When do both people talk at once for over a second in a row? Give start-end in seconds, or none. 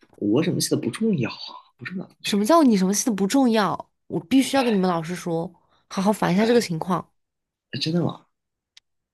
none